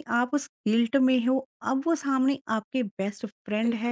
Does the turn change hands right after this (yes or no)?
no